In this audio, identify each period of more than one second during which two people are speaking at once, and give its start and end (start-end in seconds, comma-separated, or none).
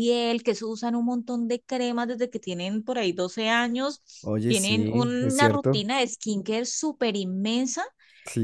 4.5-5.9